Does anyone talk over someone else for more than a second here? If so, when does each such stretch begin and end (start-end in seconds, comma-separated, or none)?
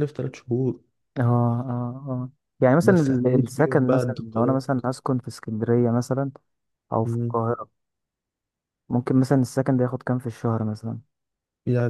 2.8-4.7